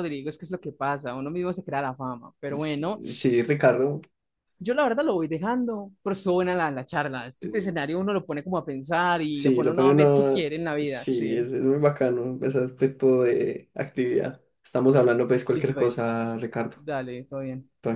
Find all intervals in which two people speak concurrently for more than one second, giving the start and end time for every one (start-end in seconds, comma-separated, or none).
9.3-11.5